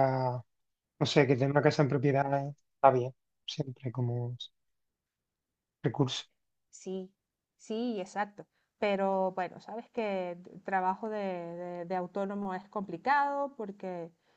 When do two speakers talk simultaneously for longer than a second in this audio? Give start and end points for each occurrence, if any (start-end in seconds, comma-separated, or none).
none